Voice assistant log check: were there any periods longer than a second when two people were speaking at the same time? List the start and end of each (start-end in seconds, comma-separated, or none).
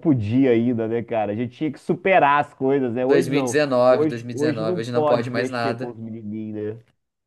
3.7-5.9